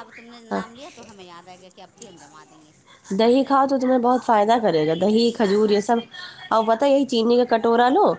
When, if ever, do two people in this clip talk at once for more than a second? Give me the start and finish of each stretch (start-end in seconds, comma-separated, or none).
none